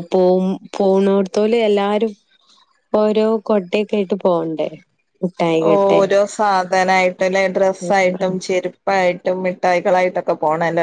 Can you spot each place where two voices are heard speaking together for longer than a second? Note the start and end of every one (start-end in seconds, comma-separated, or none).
none